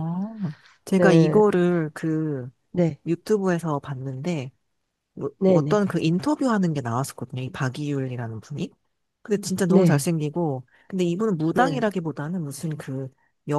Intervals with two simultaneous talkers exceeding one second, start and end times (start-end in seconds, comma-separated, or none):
none